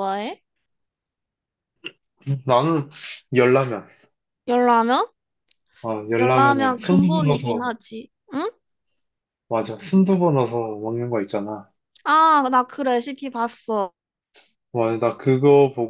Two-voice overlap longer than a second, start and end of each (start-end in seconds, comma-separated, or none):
6.2-7.7